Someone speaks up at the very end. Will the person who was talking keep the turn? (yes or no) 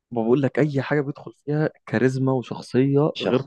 no